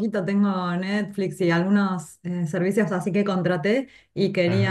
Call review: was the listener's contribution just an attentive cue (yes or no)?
yes